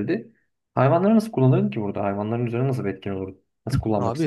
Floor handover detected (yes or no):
yes